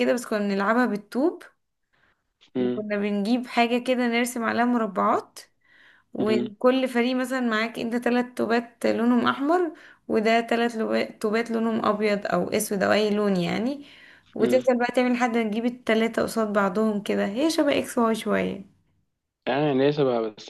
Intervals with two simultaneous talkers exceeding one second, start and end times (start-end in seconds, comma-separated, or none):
none